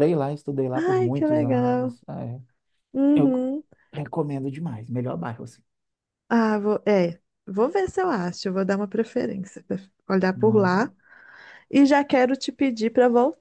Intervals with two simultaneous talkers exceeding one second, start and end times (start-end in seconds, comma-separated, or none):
0.7-2.0